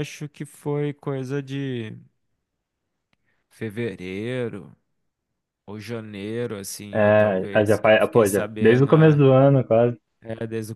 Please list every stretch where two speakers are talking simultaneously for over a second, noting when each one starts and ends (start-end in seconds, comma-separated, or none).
6.9-9.2